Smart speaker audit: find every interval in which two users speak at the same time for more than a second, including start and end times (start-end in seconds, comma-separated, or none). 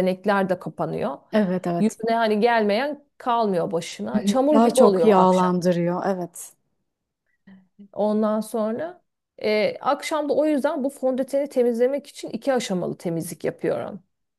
4.2-5.6